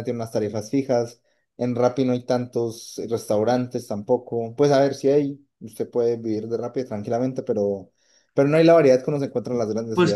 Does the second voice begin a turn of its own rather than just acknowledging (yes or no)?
yes